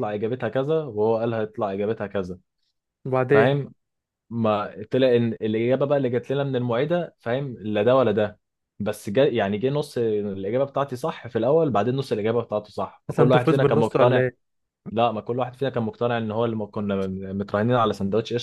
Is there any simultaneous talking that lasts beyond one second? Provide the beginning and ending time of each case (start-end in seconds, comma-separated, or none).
13.1-14.3